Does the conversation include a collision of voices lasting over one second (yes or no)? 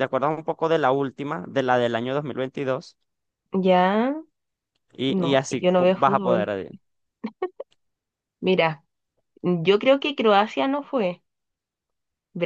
yes